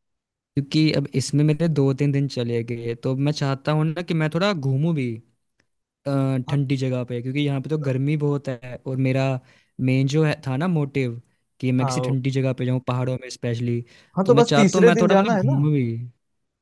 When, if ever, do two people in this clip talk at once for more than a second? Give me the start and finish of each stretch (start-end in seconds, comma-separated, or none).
14.2-15.7